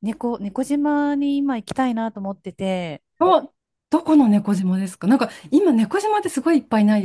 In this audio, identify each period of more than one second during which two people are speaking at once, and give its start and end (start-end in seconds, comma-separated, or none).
none